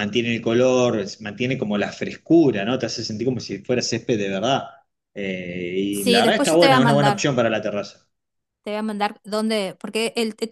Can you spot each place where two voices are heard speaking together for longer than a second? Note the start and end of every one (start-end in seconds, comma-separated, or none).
5.9-7.2